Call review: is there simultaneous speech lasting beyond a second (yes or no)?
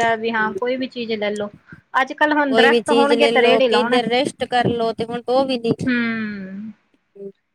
yes